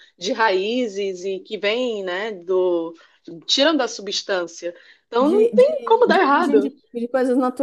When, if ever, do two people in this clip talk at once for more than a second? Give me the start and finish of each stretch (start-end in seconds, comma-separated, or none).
5.2-6.7